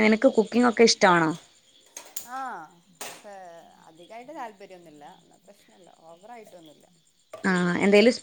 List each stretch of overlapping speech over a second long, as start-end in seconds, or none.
none